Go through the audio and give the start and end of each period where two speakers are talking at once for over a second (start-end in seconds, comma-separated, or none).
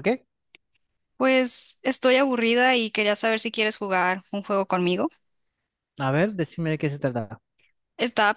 none